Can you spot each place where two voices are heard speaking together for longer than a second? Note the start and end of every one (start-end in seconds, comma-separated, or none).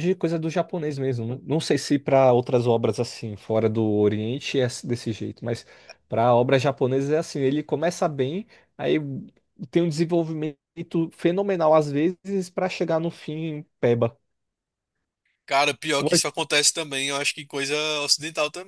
none